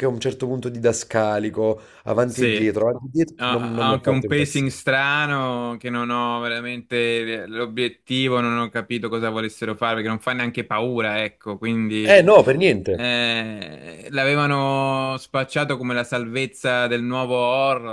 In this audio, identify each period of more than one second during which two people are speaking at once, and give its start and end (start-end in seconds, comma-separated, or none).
3.4-4.7